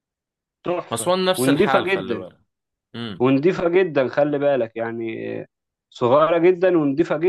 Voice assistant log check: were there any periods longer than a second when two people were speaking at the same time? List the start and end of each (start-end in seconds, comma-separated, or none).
0.9-2.2